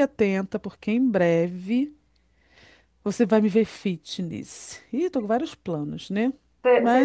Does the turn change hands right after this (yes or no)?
yes